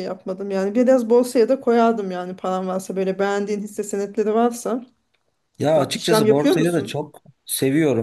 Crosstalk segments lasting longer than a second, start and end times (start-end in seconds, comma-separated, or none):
5.8-7.0